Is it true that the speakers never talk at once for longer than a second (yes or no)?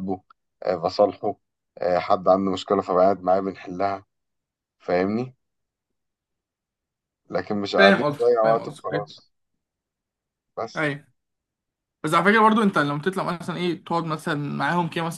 no